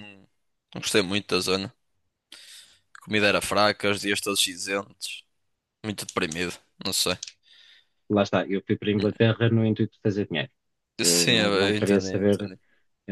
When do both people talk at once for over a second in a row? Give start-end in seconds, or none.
11.0-12.5